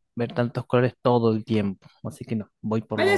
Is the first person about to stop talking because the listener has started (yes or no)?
yes